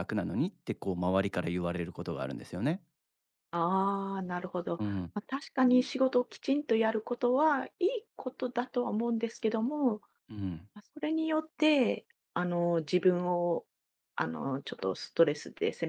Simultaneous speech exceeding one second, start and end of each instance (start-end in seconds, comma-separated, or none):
none